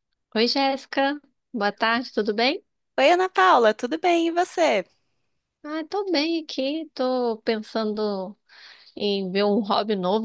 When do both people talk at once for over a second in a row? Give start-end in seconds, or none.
none